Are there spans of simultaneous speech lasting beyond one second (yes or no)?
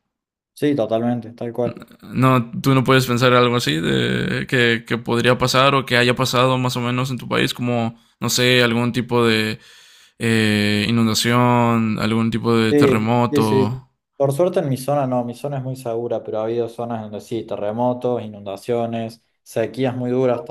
yes